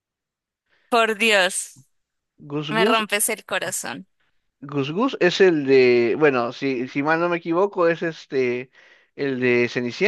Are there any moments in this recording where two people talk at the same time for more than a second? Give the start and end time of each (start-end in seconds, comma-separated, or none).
none